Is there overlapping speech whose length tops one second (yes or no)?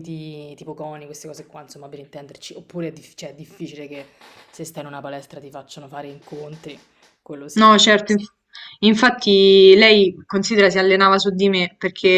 no